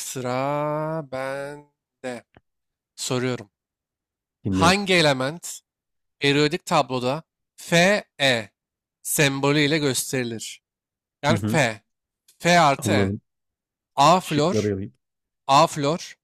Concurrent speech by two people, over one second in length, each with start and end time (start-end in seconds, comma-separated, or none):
none